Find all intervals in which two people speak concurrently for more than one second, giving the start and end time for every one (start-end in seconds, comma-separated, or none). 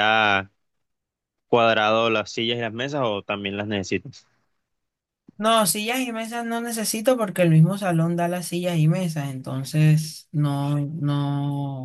none